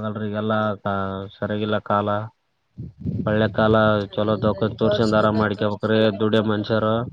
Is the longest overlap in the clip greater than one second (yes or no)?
yes